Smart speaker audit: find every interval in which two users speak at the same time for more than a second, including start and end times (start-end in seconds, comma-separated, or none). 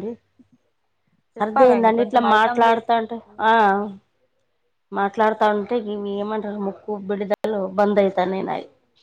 1.4-2.9